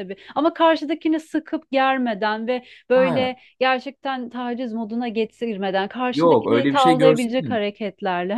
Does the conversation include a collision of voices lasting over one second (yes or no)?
yes